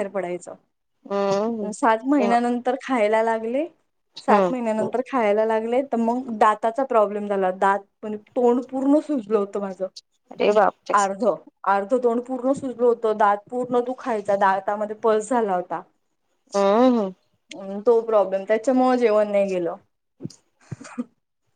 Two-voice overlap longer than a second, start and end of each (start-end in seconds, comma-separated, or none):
none